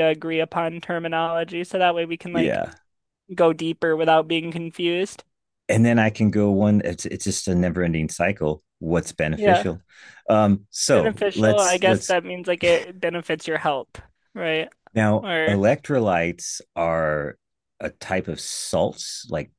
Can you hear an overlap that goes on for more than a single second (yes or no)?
yes